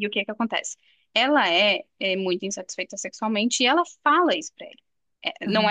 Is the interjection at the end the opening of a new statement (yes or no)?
yes